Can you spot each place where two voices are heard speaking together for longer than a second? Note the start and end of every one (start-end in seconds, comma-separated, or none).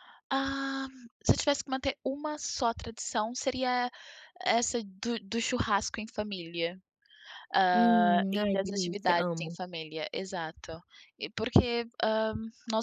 7.7-9.6